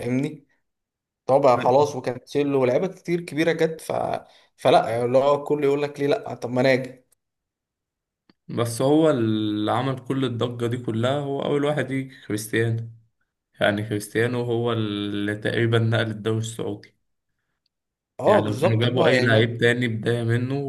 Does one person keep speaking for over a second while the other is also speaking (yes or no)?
yes